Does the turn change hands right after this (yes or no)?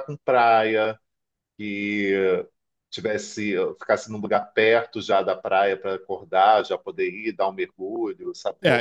yes